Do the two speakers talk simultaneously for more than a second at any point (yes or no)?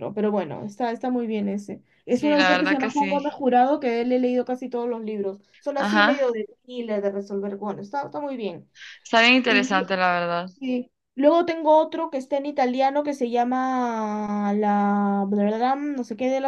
yes